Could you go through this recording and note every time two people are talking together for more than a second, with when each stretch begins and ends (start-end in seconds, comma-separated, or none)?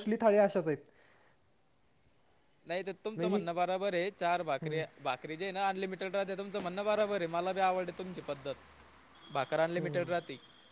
none